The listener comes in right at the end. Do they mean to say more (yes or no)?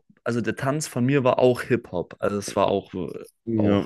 yes